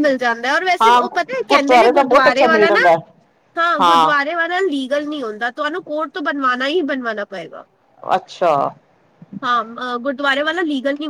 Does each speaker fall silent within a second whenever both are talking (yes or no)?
no